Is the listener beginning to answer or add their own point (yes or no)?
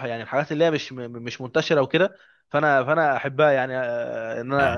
no